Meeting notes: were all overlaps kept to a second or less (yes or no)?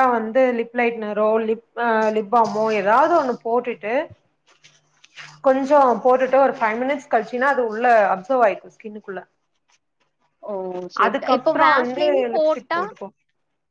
no